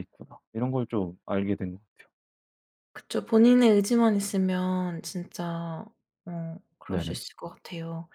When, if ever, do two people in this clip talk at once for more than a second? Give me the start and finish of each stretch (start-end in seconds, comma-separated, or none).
none